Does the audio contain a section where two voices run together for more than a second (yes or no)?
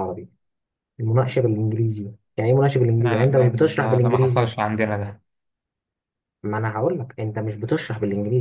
yes